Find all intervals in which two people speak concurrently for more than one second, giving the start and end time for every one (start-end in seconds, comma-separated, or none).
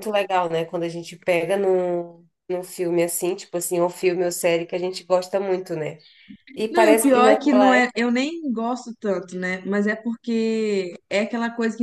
6.7-7.9